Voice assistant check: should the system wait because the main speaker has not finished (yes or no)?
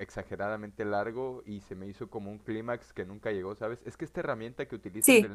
yes